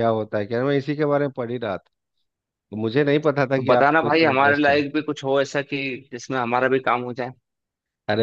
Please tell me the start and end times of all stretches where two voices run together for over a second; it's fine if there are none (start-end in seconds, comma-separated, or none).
3.6-4.8